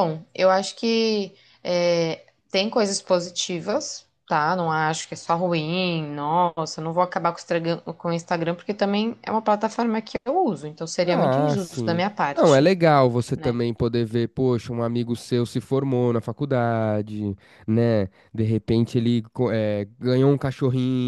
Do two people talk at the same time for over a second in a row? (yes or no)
yes